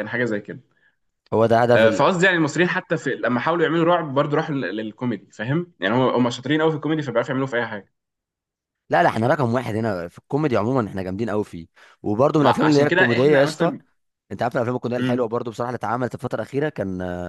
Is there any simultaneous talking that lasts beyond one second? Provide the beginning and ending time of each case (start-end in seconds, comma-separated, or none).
12.4-13.7